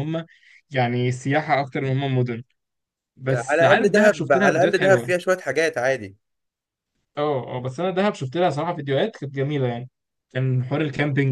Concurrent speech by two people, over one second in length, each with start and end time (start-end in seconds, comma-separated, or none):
3.3-5.1